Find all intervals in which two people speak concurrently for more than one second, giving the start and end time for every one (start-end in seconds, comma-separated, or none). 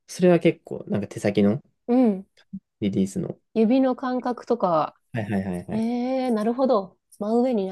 none